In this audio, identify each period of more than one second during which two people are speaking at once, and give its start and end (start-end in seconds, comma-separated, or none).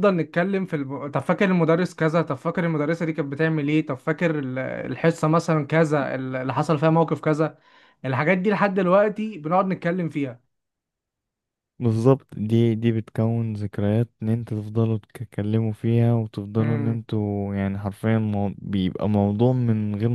none